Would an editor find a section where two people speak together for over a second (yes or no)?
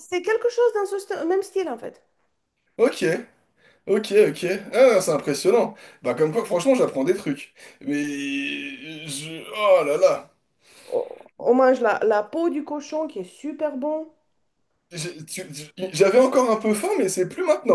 no